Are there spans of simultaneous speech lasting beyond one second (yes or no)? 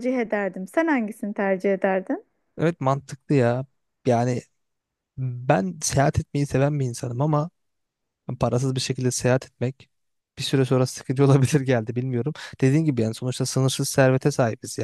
no